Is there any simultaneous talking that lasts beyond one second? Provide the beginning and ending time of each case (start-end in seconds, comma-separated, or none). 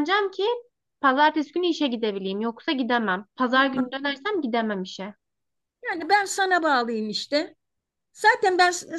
none